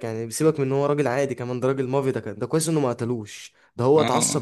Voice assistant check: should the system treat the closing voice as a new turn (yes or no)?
no